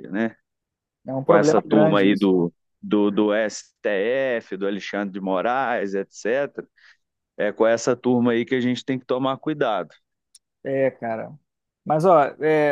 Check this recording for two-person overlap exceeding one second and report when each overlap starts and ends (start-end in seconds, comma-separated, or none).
1.2-2.5